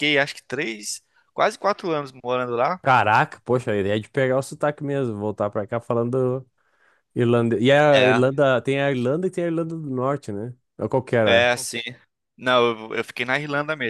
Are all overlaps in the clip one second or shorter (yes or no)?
yes